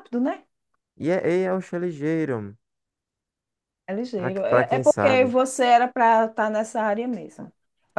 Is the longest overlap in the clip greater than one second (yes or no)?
yes